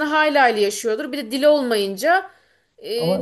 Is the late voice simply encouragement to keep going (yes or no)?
yes